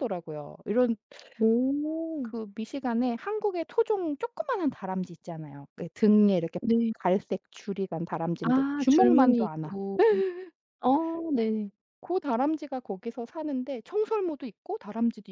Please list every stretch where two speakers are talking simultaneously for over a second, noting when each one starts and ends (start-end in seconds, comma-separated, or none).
8.4-9.6